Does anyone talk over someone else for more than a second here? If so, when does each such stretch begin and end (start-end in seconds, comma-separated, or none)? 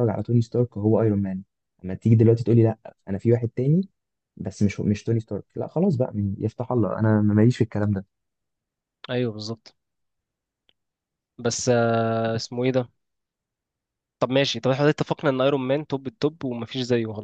none